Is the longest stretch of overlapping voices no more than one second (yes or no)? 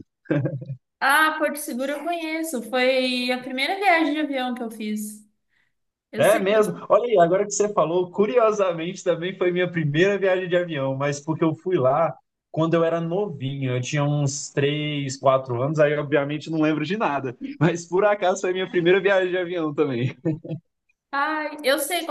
yes